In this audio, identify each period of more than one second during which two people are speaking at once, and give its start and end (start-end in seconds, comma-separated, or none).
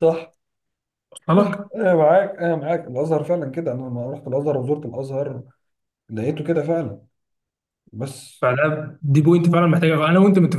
none